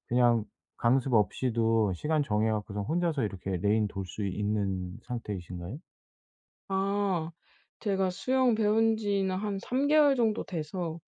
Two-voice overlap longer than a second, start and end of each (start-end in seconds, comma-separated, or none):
none